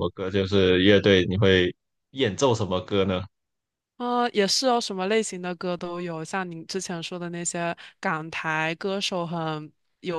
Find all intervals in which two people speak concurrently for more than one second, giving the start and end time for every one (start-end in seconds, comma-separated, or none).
none